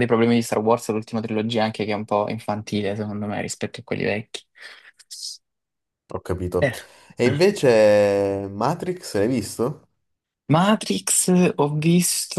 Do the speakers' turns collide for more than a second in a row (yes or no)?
no